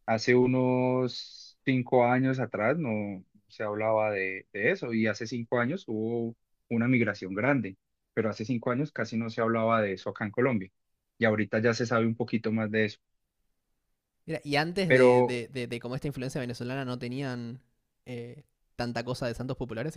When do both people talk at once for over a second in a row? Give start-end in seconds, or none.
none